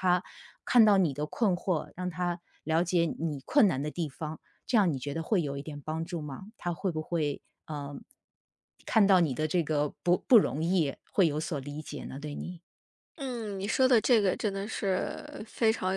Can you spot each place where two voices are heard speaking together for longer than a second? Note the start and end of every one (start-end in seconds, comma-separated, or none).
none